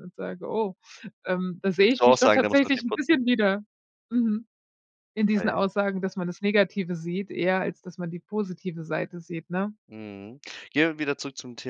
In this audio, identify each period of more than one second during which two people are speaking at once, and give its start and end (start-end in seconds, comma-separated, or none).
1.8-3.2